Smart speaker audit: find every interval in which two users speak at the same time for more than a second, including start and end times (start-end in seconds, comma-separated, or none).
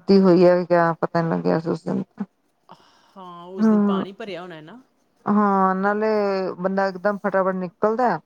none